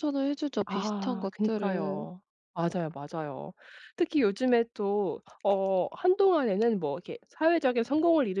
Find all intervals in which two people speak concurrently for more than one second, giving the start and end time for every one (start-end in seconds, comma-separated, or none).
0.7-2.1